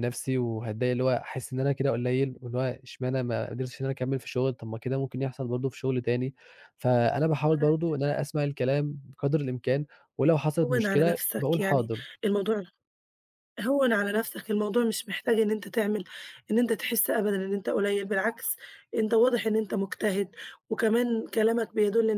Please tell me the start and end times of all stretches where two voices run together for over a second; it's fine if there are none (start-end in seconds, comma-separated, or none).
10.6-12.0